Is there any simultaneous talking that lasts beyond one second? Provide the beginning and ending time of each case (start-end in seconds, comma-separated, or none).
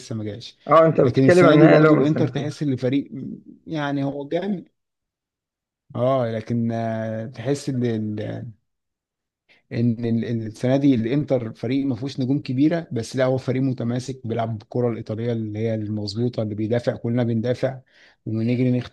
1.0-2.5